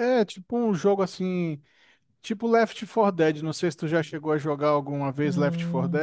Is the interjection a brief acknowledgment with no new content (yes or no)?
no